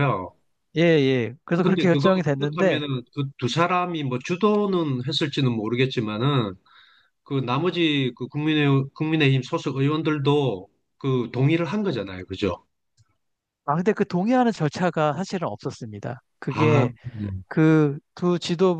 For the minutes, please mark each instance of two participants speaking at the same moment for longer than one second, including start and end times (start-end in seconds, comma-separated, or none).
1.6-2.8